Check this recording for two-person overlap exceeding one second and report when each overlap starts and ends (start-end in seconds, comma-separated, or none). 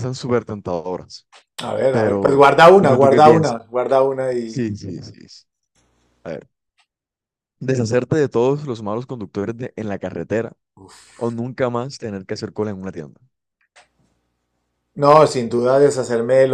1.9-3.6